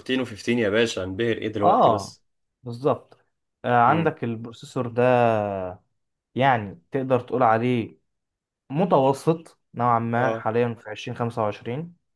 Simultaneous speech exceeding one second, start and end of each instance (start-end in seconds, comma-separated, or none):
none